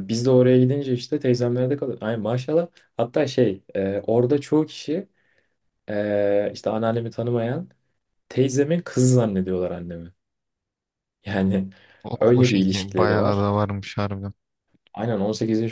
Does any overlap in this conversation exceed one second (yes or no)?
yes